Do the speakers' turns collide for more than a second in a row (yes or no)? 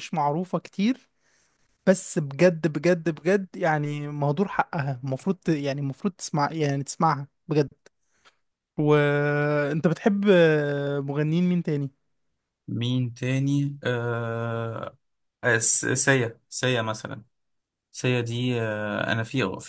no